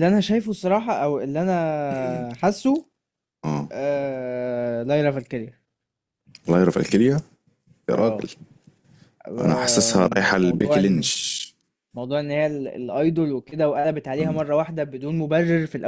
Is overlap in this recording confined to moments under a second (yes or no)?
no